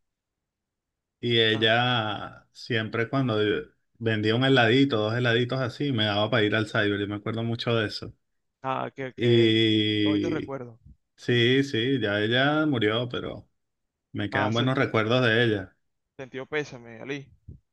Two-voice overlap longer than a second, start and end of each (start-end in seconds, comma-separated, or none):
9.2-10.6